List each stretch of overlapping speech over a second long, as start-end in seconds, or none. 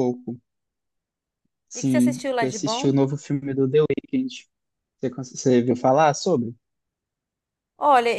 1.8-3.0